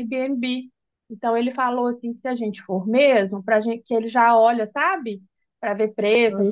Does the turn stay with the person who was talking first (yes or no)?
yes